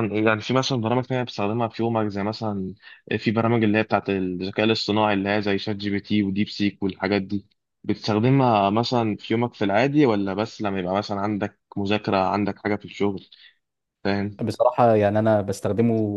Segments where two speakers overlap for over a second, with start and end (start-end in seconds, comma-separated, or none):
none